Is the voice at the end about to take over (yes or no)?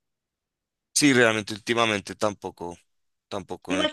yes